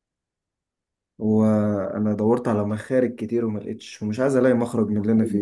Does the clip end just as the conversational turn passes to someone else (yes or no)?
yes